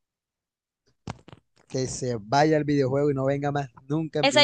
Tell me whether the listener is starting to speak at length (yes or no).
yes